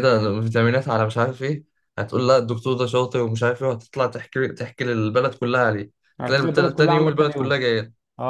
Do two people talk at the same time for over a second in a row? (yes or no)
yes